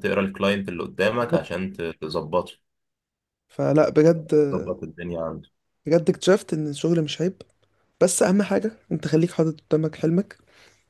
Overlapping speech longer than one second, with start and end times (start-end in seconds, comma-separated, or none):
none